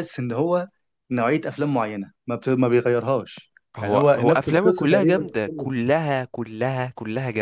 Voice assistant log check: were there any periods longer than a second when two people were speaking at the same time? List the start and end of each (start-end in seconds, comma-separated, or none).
3.8-5.7